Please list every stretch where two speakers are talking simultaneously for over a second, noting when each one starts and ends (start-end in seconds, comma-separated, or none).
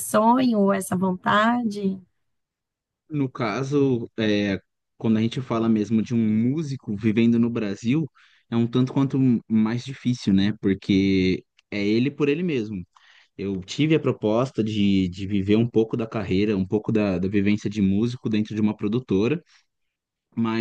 none